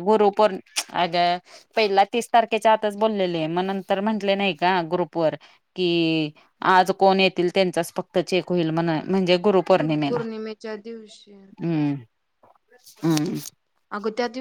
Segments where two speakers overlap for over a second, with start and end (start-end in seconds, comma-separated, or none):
none